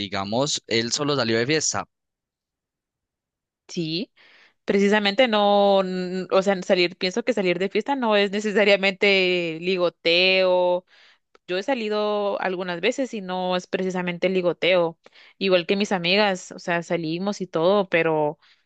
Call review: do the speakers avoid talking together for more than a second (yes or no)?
yes